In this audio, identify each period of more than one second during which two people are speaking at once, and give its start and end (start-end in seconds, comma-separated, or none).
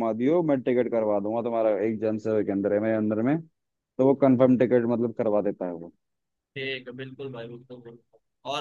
none